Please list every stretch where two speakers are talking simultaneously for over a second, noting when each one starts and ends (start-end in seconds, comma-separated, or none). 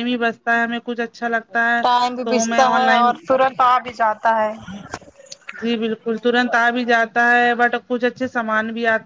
1.8-3.6